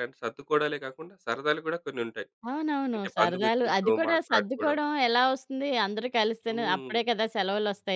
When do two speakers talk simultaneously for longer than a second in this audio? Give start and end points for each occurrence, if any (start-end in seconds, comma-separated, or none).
3.0-4.8